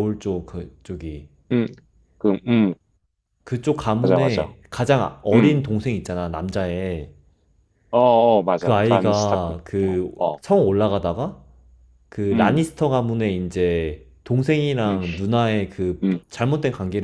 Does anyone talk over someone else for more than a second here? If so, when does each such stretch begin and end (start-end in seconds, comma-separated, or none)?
8.6-10.4